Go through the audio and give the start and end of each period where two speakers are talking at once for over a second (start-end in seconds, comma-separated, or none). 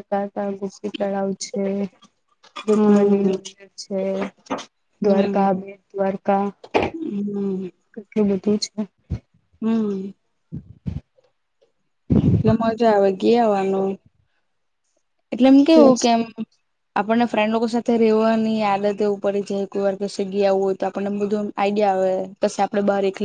none